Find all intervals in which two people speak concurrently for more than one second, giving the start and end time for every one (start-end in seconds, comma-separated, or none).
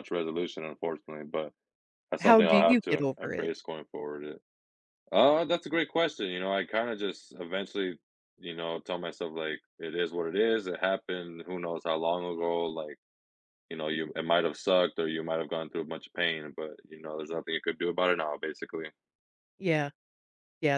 2.2-3.5